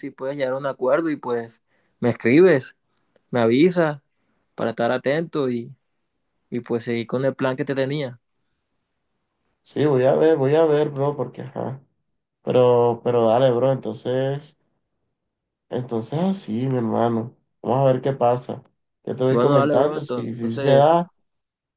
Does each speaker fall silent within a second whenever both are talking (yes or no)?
no